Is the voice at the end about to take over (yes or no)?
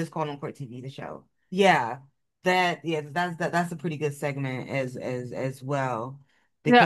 yes